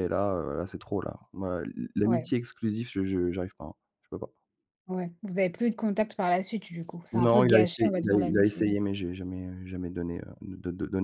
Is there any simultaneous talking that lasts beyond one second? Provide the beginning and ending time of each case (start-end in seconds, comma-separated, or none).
7.1-8.7